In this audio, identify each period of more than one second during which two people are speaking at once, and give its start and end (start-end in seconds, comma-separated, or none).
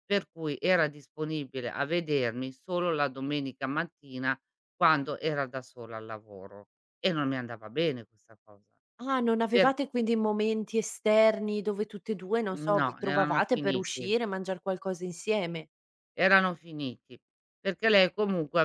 12.5-14.2